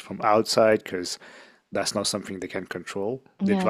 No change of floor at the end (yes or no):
yes